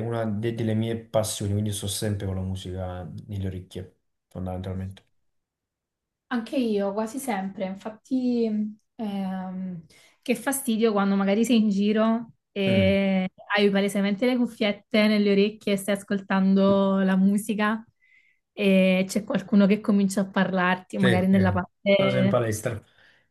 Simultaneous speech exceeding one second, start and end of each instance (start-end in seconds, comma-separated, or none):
20.9-22.4